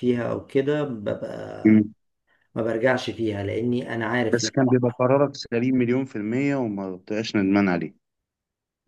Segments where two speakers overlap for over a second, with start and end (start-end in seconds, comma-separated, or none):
none